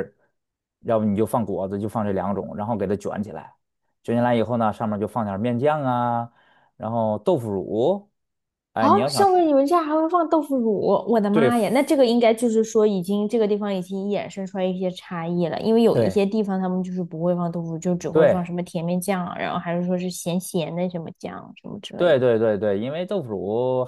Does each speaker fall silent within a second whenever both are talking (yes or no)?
yes